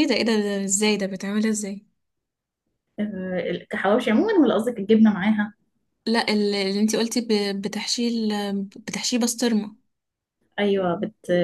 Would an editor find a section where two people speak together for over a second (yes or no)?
no